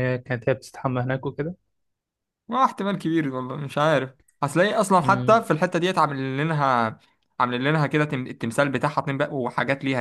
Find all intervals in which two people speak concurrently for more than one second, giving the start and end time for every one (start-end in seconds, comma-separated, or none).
none